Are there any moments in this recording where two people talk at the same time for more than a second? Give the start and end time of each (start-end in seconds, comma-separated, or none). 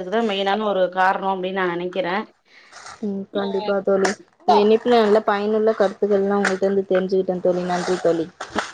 none